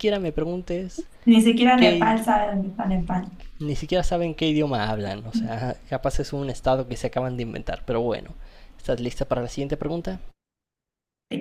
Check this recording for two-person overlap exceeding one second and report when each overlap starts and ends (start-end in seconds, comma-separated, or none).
none